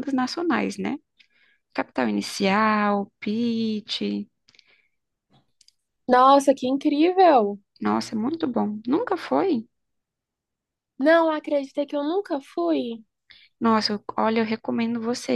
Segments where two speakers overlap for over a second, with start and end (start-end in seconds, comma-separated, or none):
none